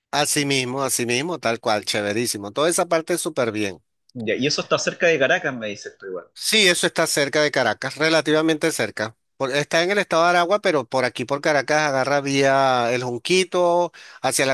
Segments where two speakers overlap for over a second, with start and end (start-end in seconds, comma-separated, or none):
none